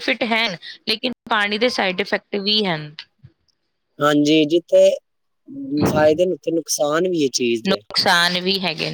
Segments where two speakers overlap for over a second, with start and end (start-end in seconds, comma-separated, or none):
none